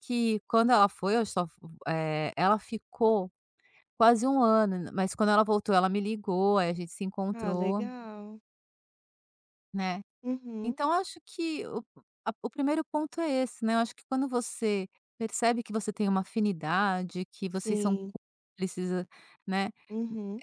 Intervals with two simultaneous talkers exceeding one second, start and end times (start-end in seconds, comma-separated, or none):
none